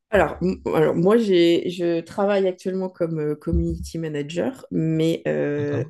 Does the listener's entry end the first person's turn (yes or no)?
no